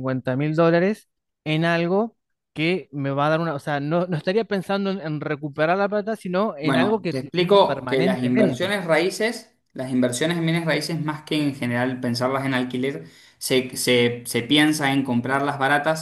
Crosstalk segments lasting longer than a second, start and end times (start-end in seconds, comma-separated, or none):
6.6-8.7